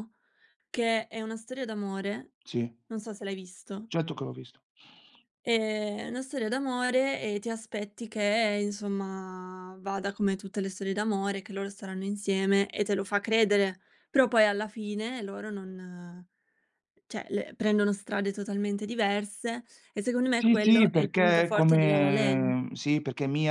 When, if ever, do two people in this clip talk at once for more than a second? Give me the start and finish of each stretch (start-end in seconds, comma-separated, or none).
20.4-22.6